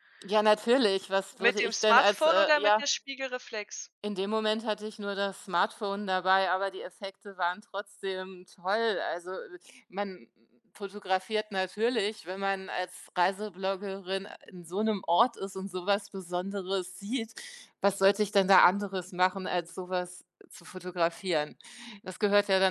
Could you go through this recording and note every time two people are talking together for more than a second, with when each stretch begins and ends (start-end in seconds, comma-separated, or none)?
1.4-2.8